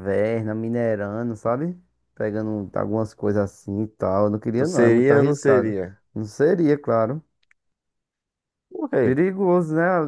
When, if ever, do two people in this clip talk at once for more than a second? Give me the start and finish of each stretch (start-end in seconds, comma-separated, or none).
4.6-5.8